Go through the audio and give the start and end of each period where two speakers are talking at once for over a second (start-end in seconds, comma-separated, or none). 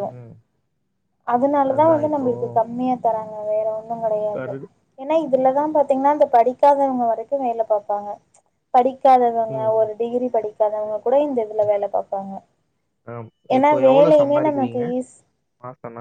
none